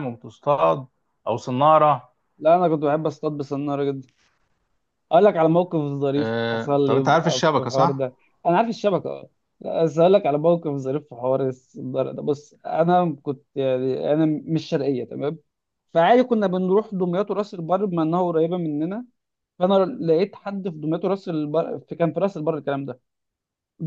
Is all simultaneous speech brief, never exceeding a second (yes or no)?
no